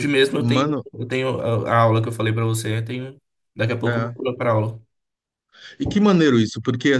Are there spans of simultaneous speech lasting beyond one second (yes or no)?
no